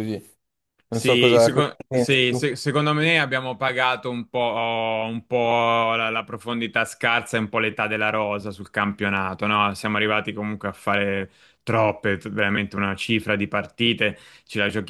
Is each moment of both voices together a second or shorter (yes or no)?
no